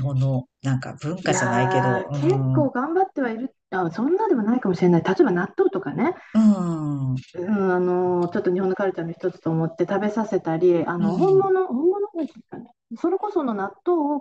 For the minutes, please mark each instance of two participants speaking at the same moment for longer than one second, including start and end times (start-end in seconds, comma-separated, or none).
1.2-2.6